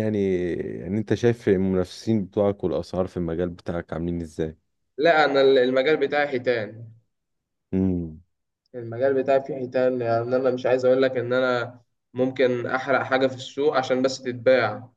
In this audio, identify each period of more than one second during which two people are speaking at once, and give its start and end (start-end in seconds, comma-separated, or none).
none